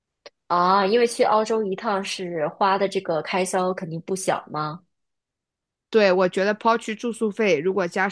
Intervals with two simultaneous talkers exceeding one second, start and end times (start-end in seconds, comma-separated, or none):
none